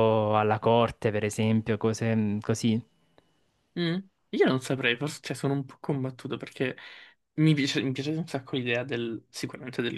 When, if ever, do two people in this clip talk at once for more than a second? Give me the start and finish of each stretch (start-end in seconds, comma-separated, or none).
none